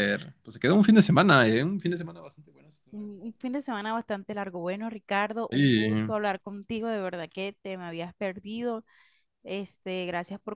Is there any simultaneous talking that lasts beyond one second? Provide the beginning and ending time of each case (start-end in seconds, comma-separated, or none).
none